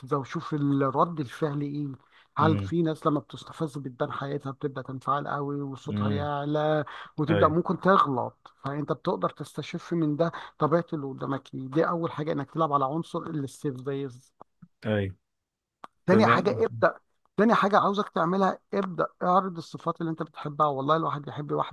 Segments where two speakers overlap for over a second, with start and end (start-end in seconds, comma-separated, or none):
none